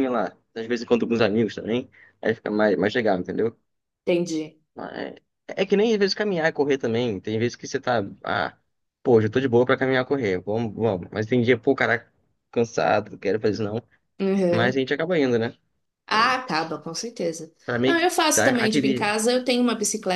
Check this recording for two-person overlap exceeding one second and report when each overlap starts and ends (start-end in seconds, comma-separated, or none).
17.6-19.2